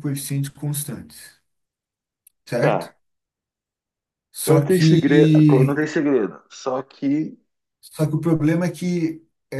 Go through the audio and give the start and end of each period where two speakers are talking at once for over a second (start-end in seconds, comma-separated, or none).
4.4-5.8